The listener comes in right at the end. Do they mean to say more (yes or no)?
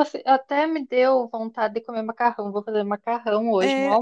yes